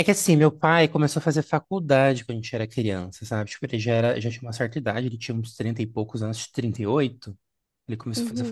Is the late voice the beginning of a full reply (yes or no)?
no